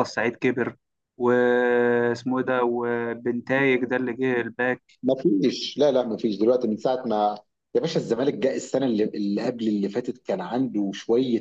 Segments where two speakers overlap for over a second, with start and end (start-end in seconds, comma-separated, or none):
none